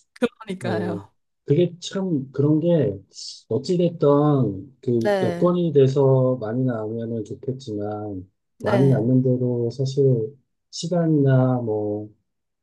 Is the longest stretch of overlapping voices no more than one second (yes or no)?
yes